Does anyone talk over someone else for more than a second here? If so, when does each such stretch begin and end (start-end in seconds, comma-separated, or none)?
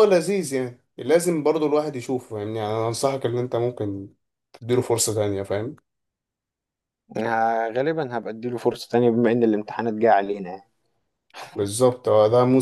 none